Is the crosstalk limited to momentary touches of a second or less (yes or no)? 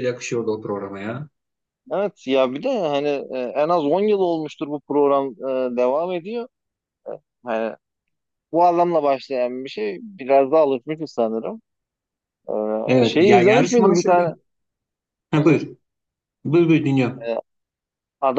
no